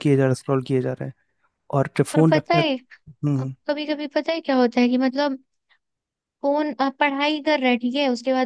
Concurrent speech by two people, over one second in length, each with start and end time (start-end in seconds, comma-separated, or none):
none